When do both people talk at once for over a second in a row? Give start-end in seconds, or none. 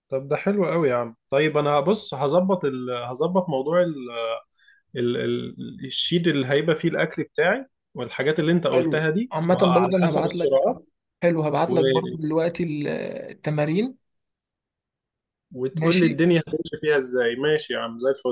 8.7-10.7